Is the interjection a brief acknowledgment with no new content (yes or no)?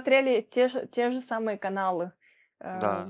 yes